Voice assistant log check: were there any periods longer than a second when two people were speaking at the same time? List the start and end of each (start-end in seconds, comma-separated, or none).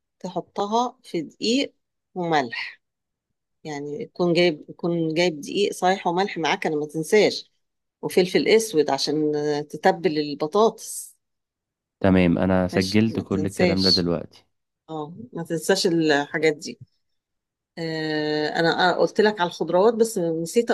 12.7-14.1